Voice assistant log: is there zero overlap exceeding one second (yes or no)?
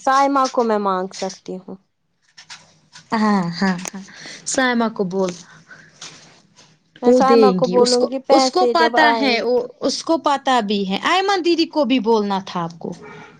no